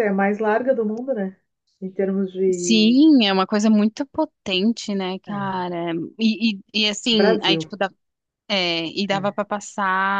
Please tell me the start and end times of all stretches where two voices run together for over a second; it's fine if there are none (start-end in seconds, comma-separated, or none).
none